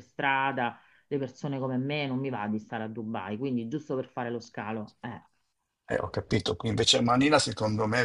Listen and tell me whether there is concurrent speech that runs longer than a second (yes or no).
no